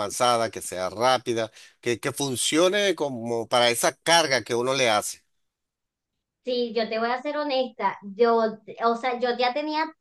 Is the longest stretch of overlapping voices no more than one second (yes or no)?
yes